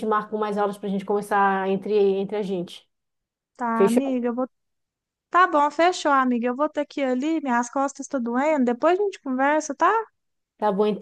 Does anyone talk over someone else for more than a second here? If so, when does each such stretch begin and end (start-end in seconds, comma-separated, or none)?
none